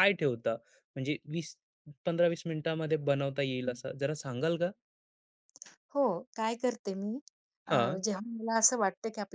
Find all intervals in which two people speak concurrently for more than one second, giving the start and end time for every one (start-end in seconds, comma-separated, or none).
none